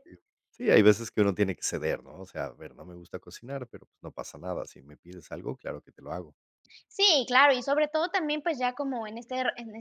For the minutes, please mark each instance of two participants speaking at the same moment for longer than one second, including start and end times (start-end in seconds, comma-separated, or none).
none